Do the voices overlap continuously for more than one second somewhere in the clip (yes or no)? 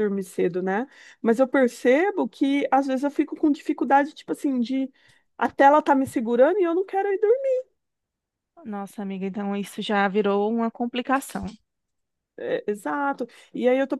no